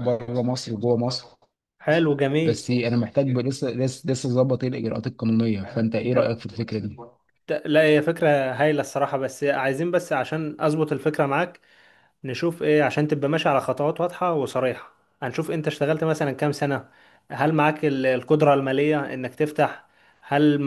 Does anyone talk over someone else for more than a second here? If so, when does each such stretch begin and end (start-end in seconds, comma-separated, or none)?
none